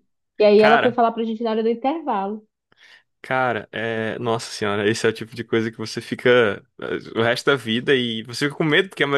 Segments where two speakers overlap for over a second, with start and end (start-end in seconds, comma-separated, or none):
none